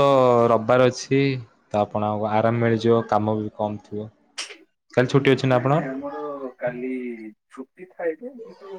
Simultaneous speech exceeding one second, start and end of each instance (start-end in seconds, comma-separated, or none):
none